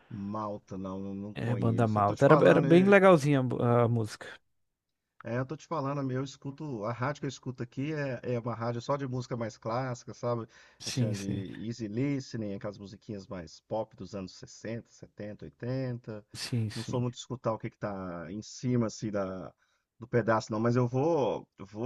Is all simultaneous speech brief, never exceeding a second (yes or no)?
no